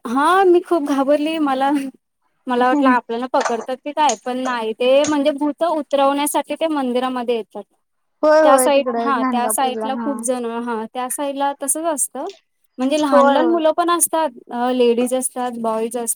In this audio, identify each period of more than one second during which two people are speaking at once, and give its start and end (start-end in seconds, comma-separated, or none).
8.2-10.1